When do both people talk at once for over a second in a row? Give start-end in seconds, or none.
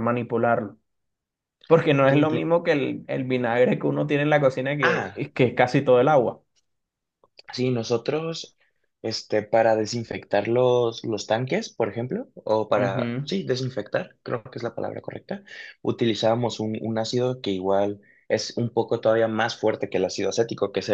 none